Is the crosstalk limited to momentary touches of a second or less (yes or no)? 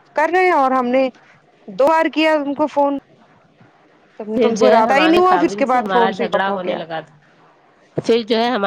no